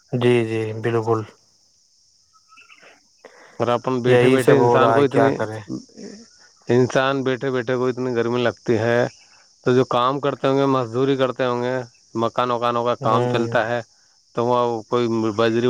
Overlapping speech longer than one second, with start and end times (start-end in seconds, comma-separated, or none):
4.1-5.3